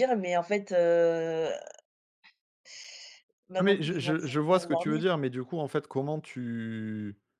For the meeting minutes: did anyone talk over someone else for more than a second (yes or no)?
yes